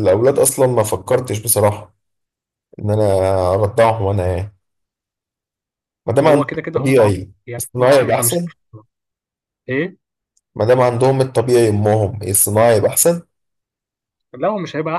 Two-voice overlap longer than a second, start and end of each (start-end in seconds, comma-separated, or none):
6.2-8.4